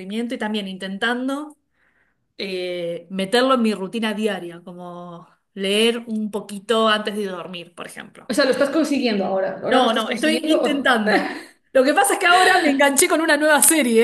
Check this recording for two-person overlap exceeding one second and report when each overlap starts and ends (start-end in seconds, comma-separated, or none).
9.7-11.0